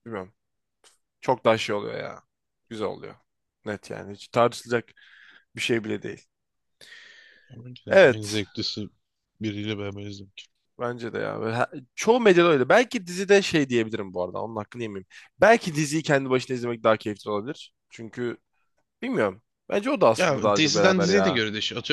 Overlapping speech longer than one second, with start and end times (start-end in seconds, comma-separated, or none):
20.2-21.4